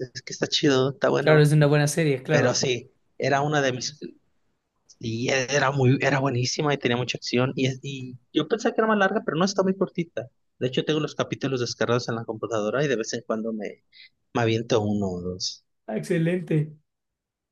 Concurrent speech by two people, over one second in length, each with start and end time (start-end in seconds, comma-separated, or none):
none